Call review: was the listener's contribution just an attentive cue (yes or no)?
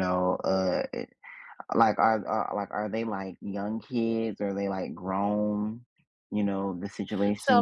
no